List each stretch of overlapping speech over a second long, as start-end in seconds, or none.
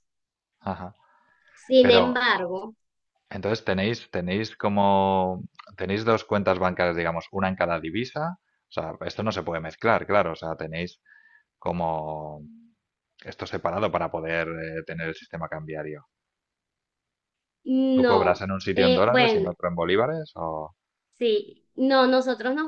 17.9-19.5